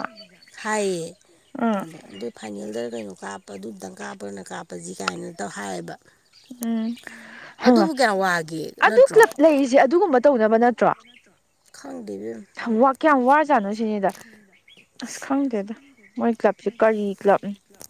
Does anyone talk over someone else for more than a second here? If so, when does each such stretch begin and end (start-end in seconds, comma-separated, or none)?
none